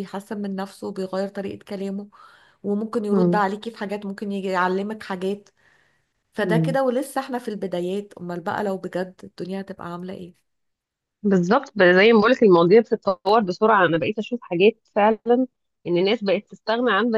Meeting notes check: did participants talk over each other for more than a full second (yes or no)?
no